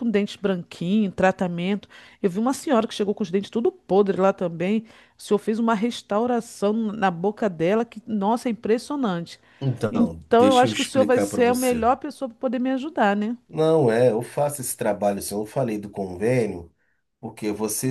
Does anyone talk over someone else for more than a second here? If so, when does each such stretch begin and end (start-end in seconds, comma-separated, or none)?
9.9-11.9